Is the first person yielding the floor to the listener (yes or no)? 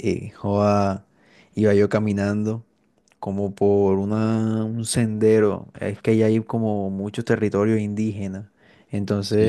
no